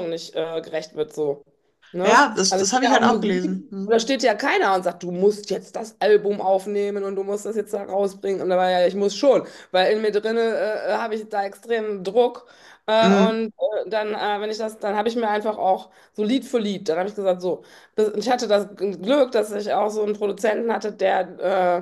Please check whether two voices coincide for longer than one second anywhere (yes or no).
yes